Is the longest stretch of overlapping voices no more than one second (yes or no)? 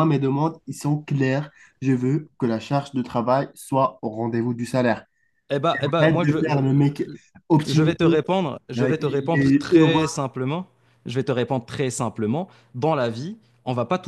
no